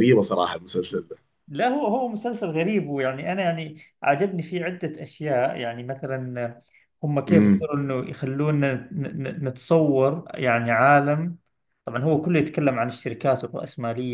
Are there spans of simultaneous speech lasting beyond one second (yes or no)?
no